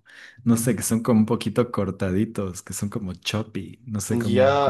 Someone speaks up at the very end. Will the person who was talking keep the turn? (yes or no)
no